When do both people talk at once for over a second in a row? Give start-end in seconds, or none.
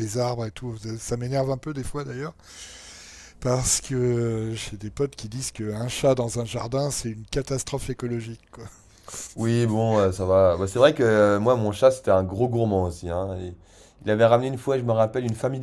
none